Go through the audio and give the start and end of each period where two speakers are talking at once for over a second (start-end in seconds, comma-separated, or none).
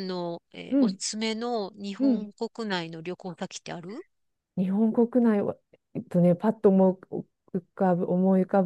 none